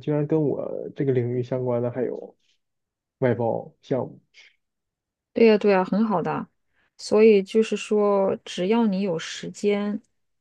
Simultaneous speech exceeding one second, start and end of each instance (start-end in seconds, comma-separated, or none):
none